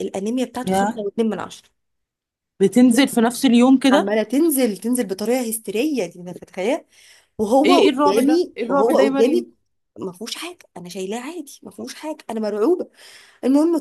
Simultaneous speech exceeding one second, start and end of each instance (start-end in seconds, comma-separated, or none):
7.6-9.5